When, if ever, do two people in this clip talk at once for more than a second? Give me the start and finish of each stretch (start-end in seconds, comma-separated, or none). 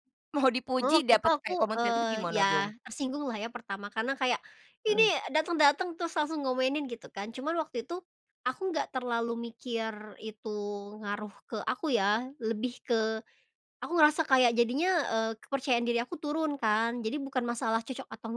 0.8-2.7